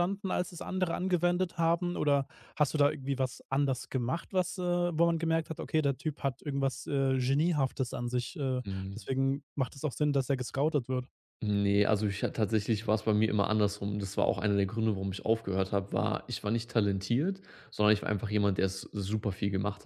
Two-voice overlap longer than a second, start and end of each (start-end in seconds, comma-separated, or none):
none